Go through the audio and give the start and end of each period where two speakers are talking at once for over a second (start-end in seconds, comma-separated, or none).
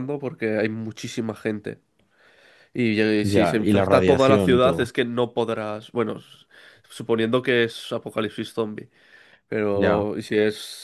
3.2-4.9